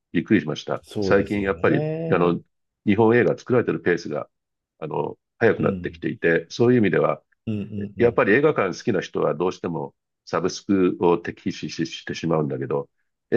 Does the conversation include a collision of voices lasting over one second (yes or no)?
yes